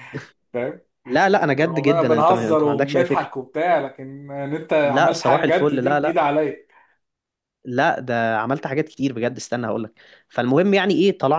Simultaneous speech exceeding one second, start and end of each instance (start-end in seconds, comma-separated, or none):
1.6-3.3, 4.8-6.2